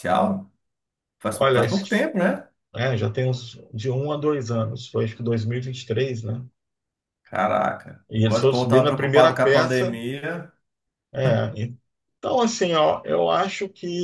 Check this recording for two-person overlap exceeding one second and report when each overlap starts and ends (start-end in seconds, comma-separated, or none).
8.1-10.0